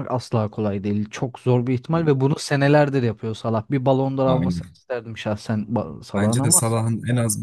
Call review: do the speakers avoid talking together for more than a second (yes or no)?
yes